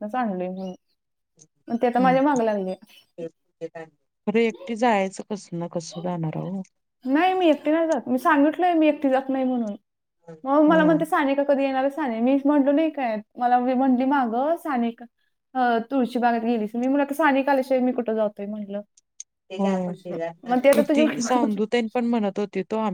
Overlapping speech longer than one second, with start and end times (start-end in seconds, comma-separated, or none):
none